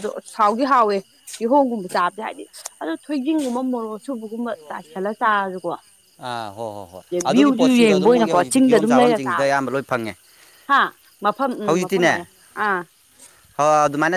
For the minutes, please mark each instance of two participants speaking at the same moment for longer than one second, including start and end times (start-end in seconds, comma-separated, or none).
7.0-9.5